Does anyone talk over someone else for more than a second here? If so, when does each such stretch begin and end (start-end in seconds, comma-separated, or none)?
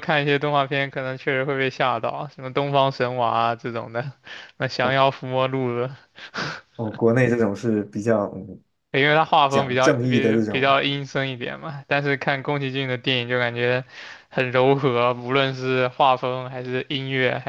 9.5-10.8